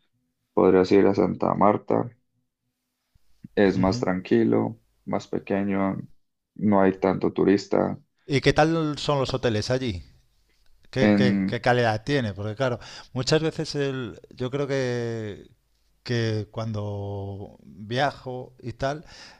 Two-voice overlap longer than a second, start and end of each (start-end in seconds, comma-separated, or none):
none